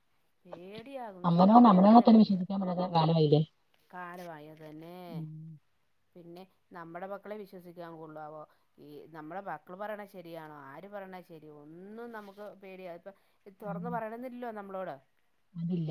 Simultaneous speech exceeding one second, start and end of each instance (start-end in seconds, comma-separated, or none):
none